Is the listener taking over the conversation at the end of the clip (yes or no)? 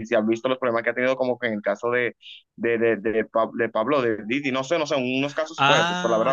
yes